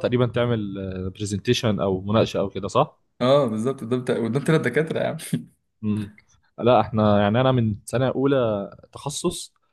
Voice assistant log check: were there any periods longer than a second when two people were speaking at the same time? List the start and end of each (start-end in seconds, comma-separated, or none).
none